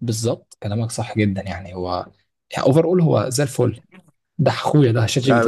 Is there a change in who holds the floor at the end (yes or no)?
yes